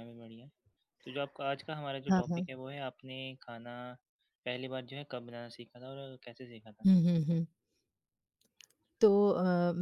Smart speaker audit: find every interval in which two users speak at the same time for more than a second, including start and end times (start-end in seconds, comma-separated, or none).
none